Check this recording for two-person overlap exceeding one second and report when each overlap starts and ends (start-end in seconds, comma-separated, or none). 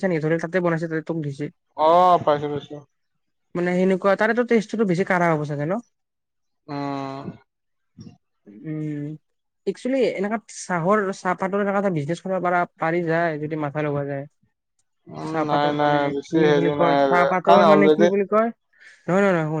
15.3-18.1